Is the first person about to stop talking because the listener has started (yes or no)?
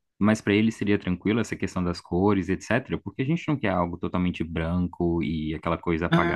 yes